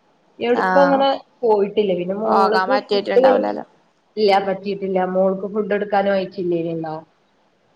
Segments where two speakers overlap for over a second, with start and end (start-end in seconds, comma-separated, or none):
2.2-3.6